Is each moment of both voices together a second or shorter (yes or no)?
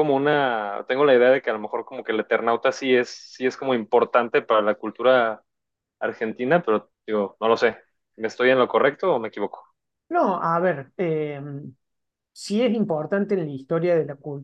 yes